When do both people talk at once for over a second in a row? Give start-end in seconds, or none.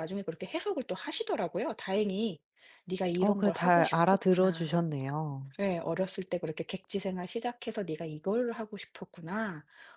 3.2-4.8